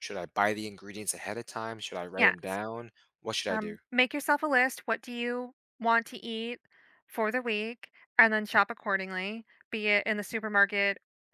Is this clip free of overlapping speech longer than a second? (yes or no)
yes